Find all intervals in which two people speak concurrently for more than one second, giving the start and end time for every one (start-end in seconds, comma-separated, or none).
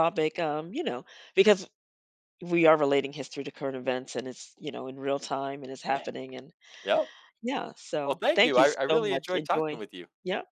8.1-9.8